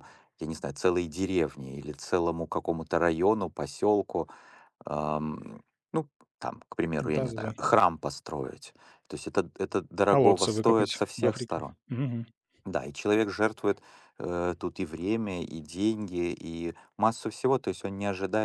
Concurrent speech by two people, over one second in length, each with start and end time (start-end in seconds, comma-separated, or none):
10.1-11.8